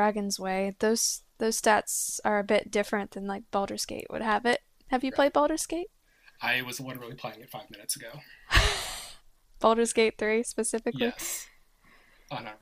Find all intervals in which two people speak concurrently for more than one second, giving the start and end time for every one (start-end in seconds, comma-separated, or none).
none